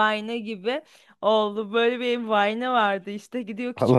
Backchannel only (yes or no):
yes